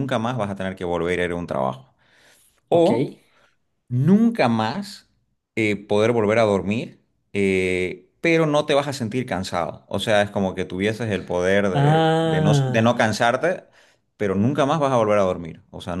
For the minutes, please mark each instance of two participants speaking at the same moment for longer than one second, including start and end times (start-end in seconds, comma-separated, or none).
11.7-13.0